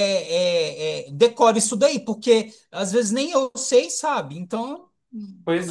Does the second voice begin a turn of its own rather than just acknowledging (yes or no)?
yes